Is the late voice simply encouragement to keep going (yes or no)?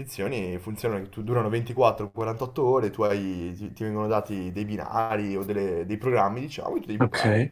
yes